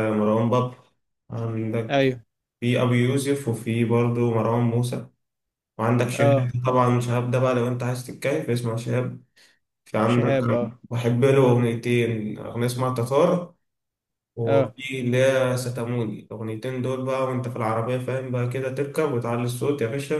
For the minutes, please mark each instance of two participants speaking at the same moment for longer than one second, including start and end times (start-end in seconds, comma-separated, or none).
none